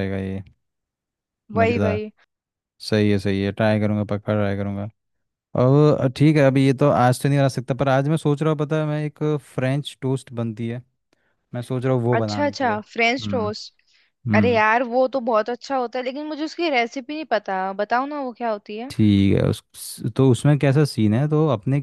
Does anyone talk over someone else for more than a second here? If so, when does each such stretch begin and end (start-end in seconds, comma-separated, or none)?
12.2-13.5